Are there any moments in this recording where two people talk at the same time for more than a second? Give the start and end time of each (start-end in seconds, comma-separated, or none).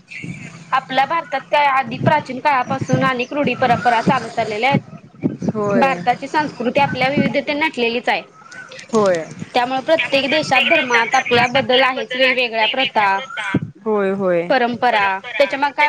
11.1-13.2